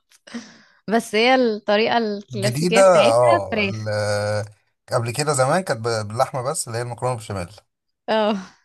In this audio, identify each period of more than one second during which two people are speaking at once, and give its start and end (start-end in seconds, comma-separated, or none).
2.3-3.8